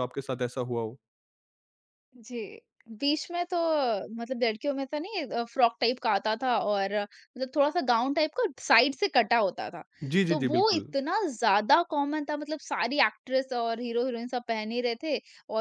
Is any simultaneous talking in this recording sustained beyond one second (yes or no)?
no